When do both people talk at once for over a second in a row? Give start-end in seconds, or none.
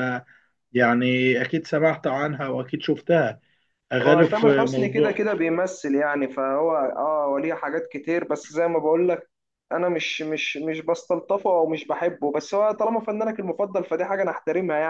4.0-5.2